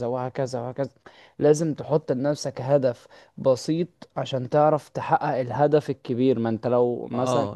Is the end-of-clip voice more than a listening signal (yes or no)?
no